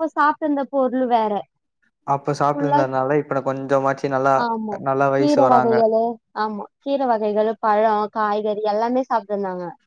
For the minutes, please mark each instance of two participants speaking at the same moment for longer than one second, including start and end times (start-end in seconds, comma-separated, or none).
none